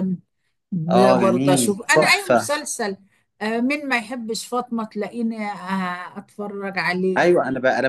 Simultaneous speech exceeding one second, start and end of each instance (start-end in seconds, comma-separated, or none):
0.9-2.6